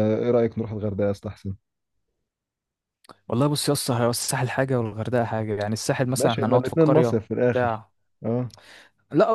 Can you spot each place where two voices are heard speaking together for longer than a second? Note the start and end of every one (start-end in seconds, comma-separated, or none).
6.2-7.8